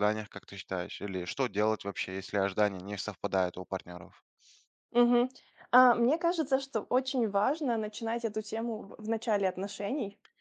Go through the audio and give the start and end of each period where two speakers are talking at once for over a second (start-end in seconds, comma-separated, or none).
none